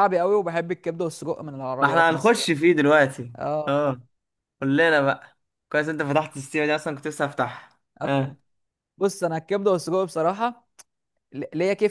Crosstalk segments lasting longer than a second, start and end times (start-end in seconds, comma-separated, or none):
none